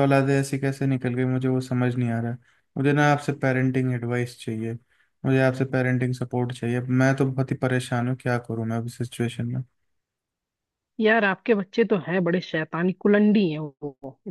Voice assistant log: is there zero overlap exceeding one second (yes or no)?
yes